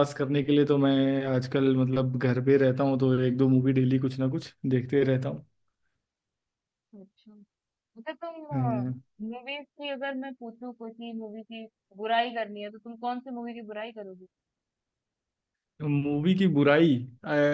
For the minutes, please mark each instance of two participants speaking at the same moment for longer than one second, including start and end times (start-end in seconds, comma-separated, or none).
none